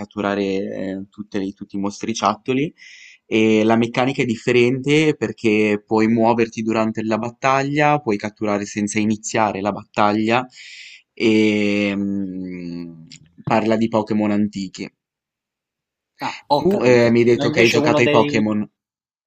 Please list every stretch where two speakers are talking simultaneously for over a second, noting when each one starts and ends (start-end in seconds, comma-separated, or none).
16.6-18.4